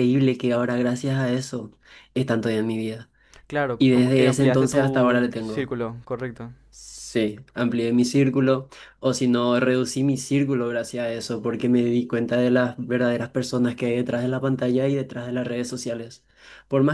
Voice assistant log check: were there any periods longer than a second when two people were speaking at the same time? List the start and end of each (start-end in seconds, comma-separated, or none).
3.8-5.7